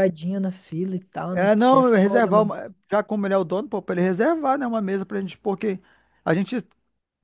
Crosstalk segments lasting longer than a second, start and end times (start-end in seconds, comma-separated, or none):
1.3-2.5